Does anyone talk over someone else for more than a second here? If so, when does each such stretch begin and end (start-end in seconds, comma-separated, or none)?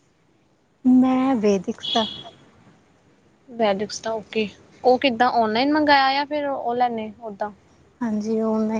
none